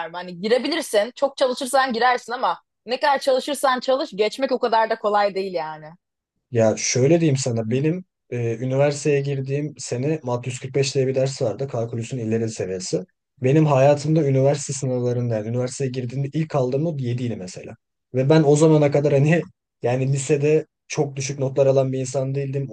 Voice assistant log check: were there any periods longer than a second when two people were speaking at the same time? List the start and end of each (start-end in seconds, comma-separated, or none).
none